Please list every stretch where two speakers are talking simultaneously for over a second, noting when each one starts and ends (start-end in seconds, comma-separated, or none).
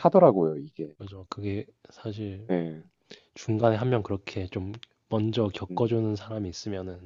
none